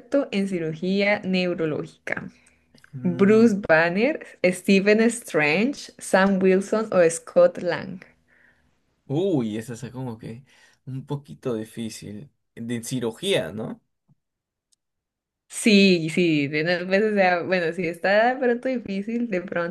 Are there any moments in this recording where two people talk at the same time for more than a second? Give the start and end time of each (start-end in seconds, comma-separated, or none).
none